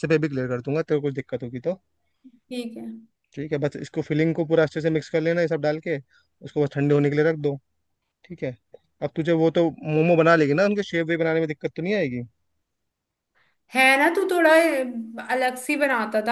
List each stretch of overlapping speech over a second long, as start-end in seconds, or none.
none